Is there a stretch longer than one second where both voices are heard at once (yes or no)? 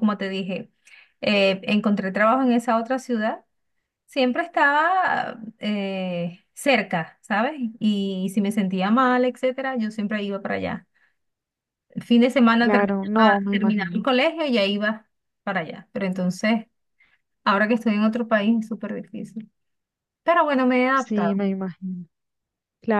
yes